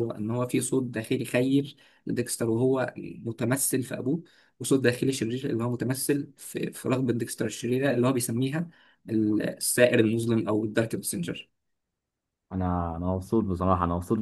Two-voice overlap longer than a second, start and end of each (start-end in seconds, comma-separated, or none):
none